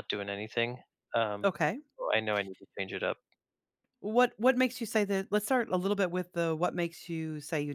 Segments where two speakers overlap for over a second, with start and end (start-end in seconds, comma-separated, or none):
none